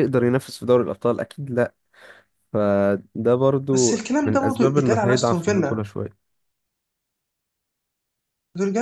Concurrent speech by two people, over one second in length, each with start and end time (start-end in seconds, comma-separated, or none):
3.7-5.8